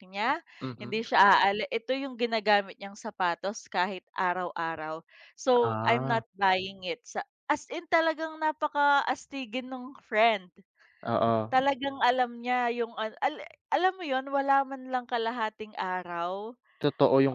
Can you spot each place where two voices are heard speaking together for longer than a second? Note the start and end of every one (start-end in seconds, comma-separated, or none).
none